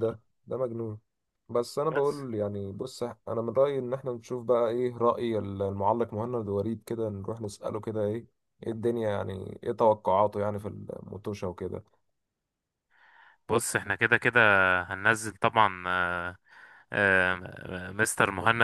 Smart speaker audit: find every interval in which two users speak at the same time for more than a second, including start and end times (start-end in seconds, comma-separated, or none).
none